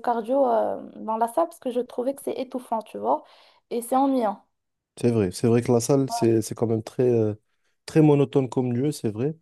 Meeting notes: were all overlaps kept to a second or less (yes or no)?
yes